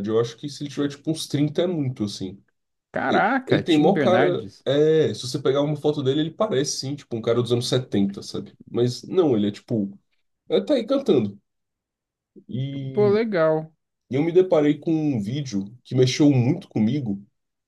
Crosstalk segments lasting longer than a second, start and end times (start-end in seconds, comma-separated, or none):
3.1-4.6